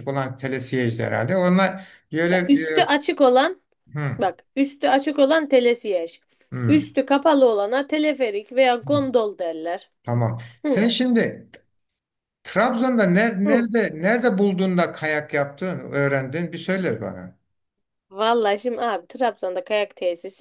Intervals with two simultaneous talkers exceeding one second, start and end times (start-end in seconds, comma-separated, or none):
none